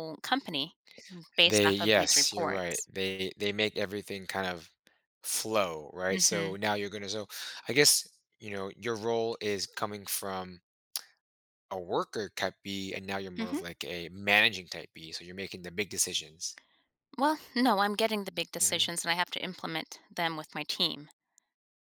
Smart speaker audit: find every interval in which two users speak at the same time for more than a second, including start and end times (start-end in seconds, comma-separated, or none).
1.4-2.9